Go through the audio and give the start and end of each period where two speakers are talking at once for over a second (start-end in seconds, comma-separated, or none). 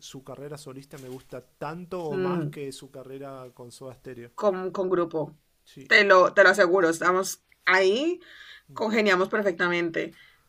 none